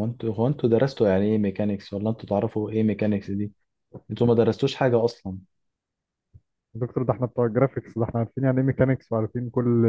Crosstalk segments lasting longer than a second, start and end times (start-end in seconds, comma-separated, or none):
none